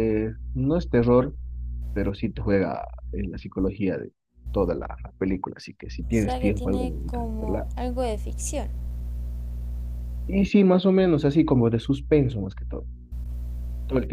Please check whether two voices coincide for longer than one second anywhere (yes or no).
yes